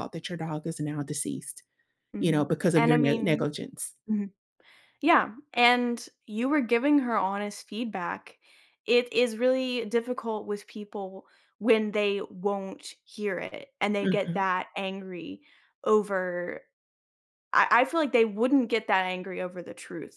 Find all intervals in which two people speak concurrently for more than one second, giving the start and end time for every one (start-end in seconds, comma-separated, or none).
2.2-3.5